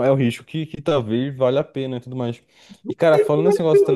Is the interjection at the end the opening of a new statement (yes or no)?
yes